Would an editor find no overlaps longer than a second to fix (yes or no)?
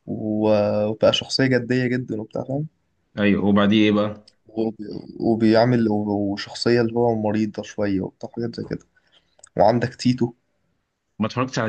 yes